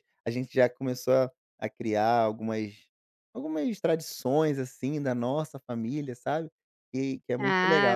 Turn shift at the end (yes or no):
yes